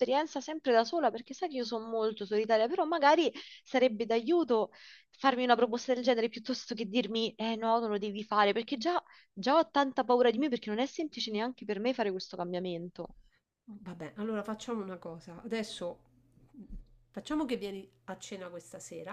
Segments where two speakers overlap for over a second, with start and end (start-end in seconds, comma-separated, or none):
none